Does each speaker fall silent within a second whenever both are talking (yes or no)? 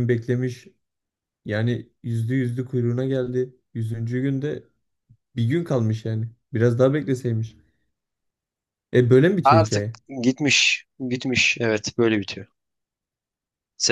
yes